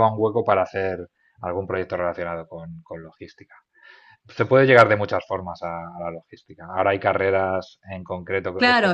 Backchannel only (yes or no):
no